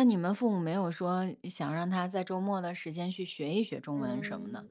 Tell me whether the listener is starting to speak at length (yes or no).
yes